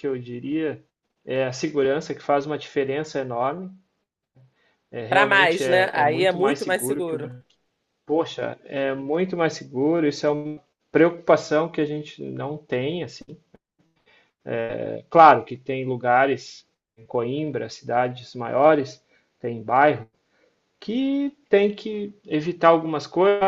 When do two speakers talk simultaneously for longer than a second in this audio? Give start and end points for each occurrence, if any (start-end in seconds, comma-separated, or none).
5.1-7.3